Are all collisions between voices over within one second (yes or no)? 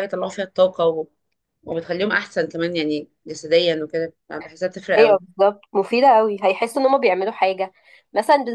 yes